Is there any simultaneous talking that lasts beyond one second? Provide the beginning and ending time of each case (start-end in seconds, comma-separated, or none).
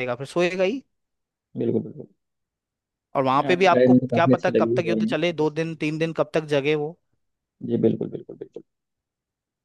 3.5-5.2